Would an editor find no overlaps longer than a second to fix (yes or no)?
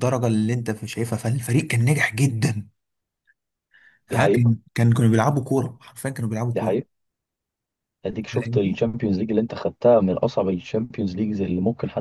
yes